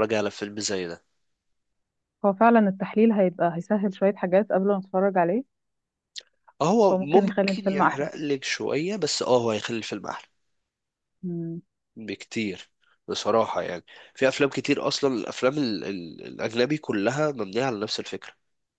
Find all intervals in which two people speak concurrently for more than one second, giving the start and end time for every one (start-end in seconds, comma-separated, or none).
6.9-8.1